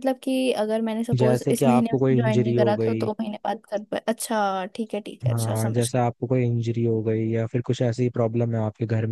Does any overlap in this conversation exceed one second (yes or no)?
yes